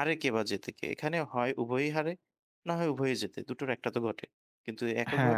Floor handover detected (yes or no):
yes